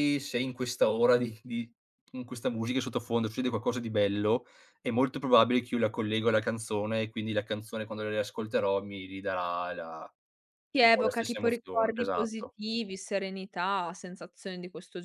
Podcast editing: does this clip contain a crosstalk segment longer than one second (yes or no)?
yes